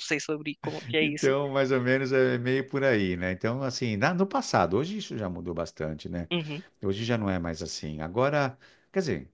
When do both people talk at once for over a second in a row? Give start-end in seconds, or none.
none